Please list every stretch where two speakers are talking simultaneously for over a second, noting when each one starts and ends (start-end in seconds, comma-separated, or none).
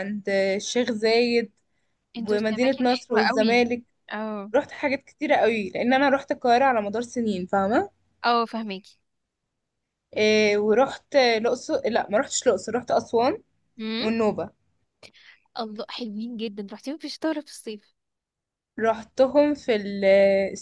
2.3-3.6